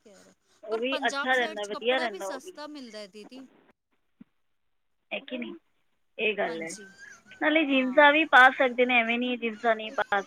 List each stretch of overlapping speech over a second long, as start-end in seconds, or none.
0.7-2.4